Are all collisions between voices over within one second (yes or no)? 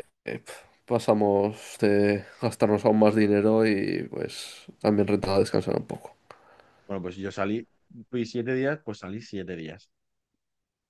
yes